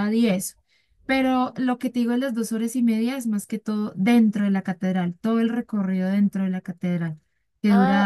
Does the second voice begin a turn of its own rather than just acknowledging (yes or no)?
yes